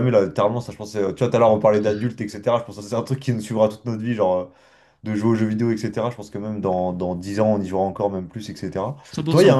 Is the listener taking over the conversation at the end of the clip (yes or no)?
no